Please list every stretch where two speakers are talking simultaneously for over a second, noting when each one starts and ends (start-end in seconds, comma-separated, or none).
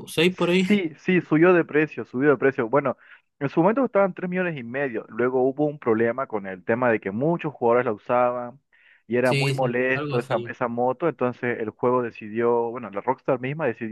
9.2-10.6